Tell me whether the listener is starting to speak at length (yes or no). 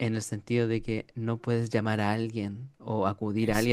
no